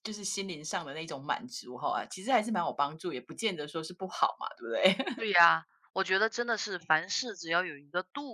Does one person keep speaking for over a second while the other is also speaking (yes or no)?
no